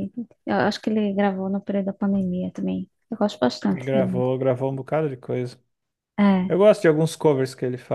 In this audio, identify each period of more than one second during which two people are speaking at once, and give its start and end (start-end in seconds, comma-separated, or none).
none